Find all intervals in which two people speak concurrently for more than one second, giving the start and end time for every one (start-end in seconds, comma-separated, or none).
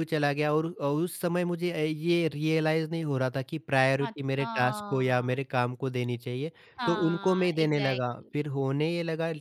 6.8-8.4